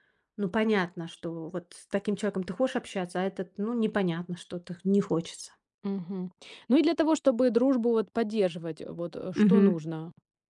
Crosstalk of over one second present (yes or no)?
no